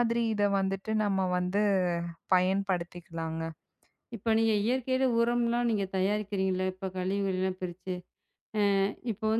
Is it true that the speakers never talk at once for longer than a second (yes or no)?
yes